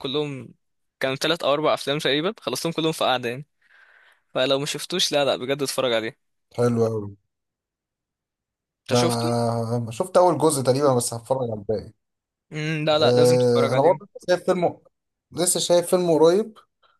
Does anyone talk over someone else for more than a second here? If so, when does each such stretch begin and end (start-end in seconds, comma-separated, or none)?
12.9-14.1